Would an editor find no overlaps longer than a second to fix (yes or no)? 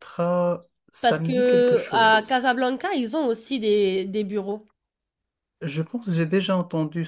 no